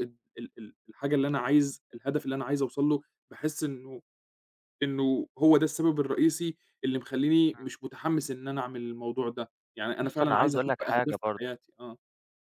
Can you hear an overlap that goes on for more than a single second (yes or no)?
yes